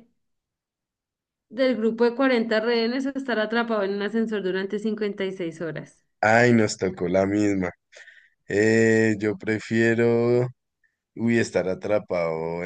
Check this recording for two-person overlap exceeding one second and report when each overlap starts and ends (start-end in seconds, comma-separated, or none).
none